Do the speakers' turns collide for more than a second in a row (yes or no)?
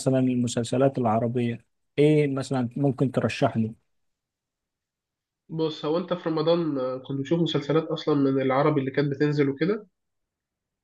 no